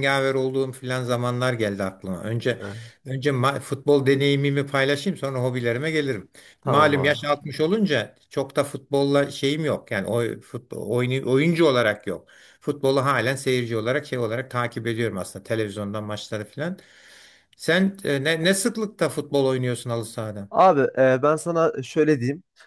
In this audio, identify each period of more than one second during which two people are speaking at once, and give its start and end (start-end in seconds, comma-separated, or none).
none